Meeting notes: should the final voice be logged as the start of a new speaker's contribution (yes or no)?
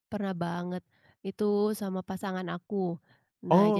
no